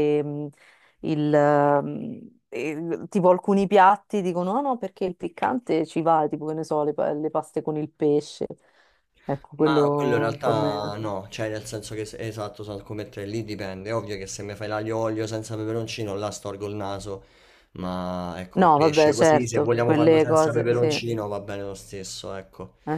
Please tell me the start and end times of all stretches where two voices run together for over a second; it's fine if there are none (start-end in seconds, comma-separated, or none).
9.6-11.0, 18.6-21.0